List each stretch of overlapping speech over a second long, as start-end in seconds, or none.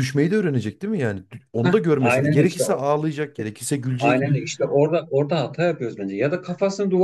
1.6-2.9